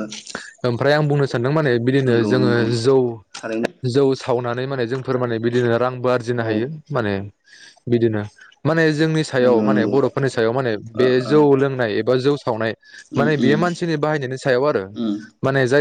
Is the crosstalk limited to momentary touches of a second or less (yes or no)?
yes